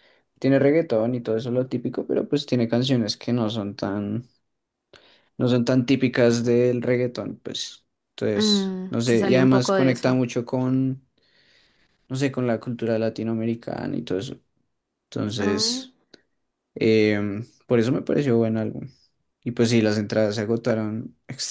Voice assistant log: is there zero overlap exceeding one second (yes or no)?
no